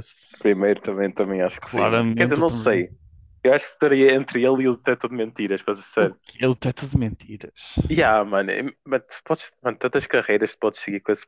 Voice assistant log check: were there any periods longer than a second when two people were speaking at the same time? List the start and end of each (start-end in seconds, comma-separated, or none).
1.6-2.9